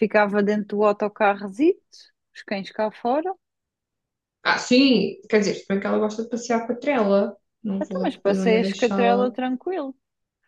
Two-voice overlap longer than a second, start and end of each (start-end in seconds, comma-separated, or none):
7.8-9.3